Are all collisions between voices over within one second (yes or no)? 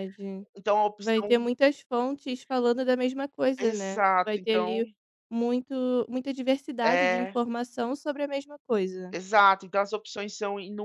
no